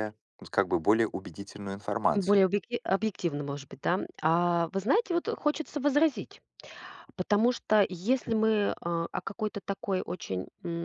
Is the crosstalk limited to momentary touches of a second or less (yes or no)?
yes